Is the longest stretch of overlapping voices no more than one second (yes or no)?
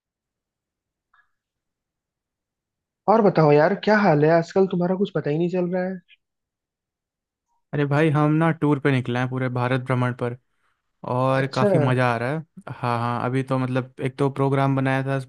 yes